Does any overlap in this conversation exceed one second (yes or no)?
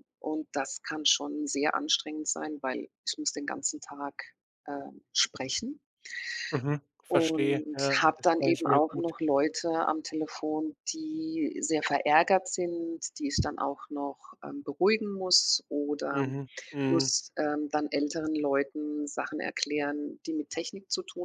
yes